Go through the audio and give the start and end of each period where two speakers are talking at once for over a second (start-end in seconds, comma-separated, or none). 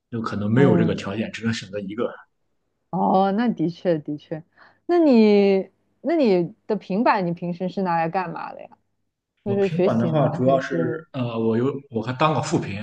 9.4-10.8